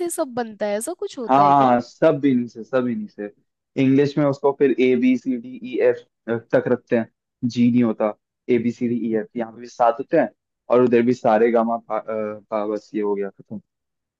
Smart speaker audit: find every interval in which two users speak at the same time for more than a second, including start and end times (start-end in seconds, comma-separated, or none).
none